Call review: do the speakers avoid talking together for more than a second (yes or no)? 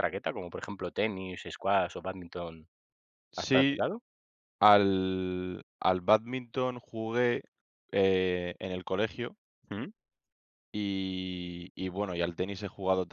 yes